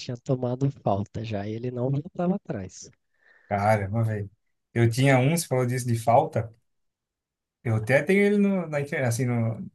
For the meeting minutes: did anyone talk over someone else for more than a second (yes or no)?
no